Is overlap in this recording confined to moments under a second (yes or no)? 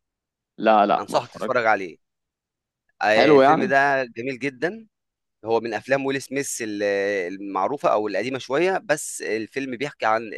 yes